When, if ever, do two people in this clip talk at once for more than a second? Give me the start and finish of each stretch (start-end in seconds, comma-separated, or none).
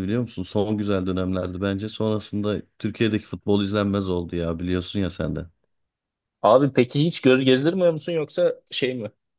none